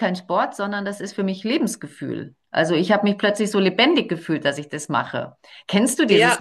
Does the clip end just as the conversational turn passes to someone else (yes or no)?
yes